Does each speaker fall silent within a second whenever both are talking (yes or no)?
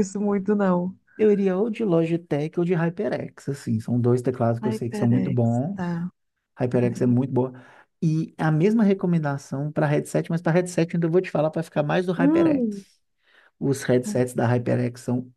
no